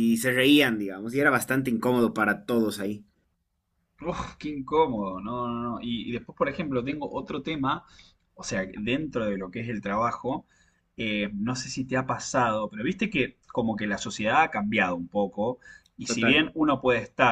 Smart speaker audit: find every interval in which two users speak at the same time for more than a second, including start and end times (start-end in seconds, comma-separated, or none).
none